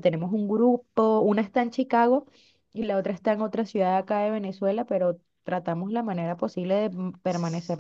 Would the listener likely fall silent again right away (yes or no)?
yes